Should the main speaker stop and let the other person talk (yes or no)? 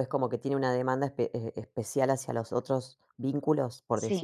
yes